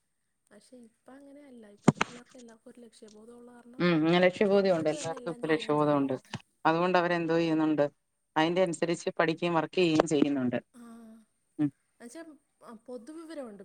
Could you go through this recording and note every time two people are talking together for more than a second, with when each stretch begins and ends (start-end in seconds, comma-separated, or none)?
4.5-6.0